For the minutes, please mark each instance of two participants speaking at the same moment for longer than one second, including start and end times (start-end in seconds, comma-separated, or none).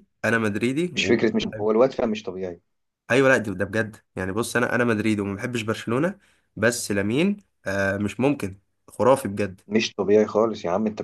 none